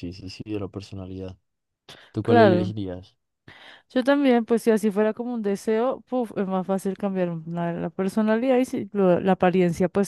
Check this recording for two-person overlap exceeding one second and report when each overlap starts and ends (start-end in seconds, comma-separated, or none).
none